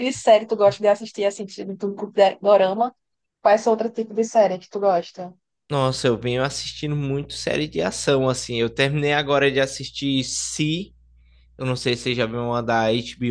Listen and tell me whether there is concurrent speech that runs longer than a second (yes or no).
no